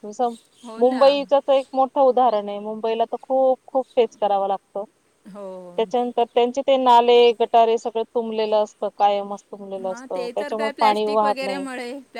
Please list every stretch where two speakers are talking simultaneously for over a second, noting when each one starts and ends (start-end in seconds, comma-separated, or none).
10.3-11.6